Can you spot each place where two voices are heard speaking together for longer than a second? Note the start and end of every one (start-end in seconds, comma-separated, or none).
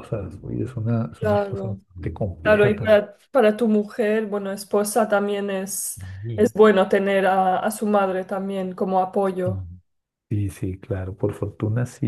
none